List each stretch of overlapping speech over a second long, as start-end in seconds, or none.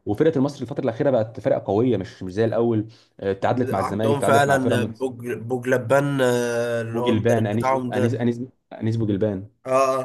3.7-5.1, 6.9-8.2